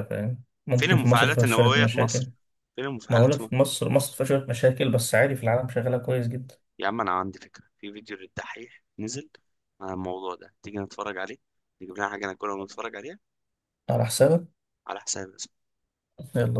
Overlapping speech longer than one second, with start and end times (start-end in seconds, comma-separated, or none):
0.8-2.3